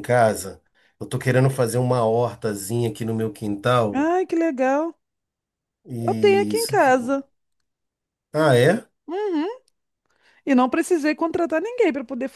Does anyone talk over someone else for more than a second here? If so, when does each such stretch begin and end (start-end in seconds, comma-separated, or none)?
6.0-7.2